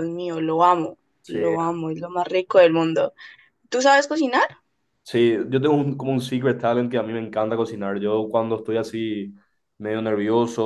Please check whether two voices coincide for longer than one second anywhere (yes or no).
no